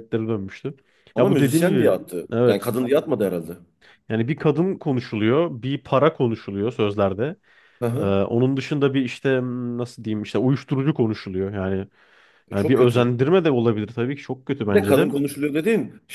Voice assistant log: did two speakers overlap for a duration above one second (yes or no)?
yes